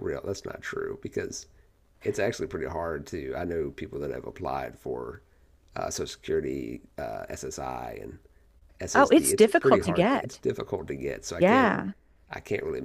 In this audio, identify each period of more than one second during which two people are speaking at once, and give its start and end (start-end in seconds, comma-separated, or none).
8.9-10.4